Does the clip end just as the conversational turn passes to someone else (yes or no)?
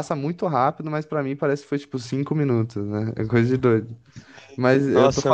no